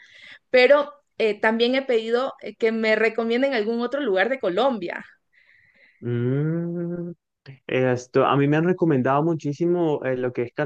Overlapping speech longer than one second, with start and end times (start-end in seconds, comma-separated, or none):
none